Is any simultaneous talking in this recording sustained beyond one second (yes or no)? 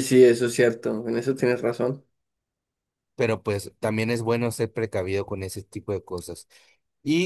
no